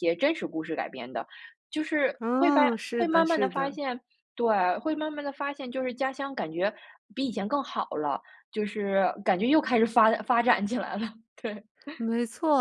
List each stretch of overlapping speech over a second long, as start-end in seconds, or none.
2.2-3.8